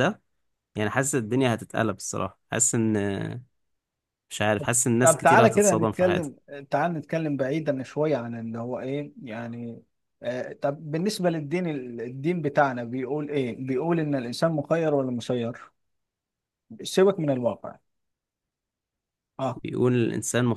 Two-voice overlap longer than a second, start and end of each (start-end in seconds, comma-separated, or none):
5.0-6.3